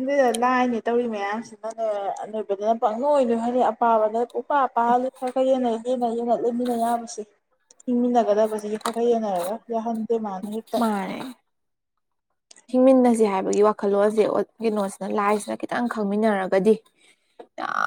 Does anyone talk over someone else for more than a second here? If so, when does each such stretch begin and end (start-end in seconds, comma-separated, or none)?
none